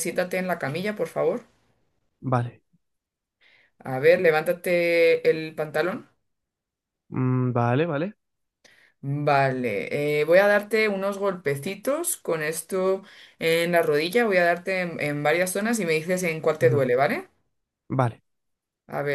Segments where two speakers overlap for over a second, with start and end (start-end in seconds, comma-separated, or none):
none